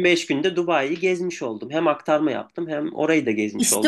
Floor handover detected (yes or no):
yes